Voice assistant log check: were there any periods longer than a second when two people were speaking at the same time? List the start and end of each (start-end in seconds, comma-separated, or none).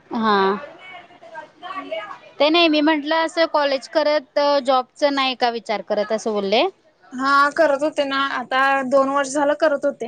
none